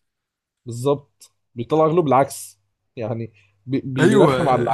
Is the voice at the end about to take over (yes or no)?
yes